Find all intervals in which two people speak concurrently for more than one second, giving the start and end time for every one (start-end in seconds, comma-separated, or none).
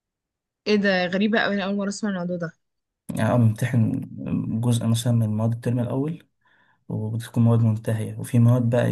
none